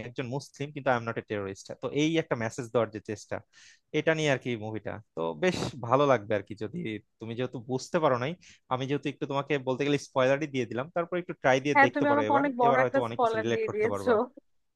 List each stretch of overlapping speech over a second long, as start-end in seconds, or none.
11.7-14.1